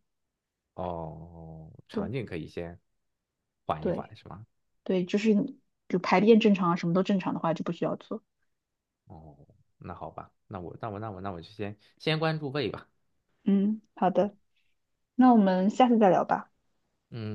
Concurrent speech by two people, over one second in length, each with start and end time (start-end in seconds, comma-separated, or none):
none